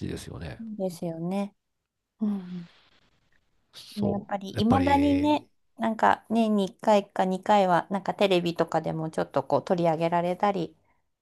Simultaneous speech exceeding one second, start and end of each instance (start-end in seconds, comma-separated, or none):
4.0-5.5